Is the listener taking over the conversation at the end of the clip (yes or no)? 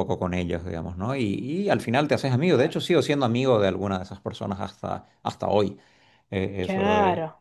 yes